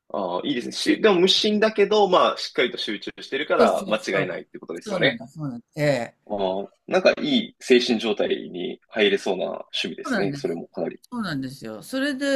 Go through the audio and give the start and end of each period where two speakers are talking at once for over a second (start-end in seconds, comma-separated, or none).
3.6-5.2